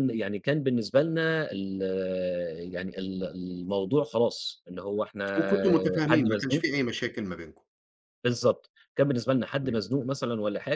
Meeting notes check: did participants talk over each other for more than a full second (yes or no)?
no